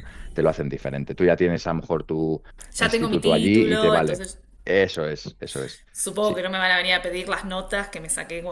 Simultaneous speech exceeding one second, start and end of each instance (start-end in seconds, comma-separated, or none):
2.7-4.3